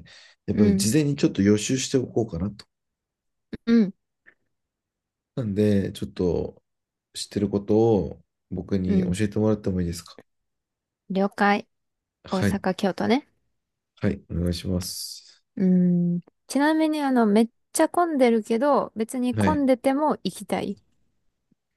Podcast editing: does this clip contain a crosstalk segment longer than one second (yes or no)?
no